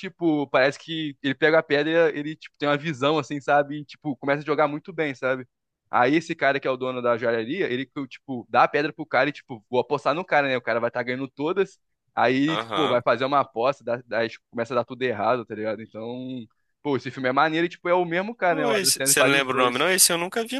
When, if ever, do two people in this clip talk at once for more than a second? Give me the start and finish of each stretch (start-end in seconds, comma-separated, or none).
18.5-19.9